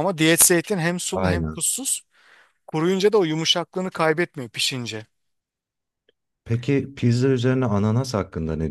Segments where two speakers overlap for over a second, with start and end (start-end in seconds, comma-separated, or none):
none